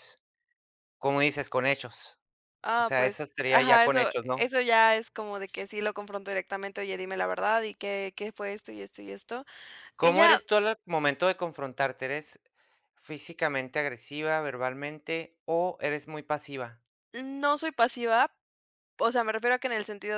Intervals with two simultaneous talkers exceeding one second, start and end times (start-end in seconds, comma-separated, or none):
2.8-4.5